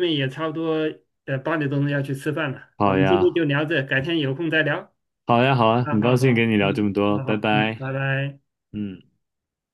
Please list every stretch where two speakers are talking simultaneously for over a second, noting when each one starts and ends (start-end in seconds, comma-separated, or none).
5.8-7.8